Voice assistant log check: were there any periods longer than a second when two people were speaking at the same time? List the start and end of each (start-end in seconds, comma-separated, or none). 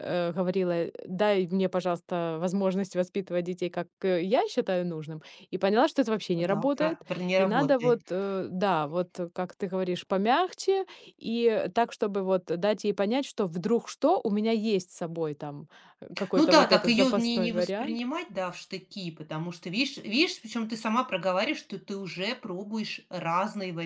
6.3-8.0, 16.3-18.0